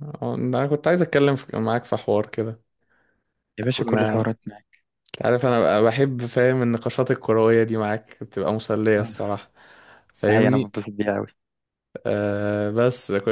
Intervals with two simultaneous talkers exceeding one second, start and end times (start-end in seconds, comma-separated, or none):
none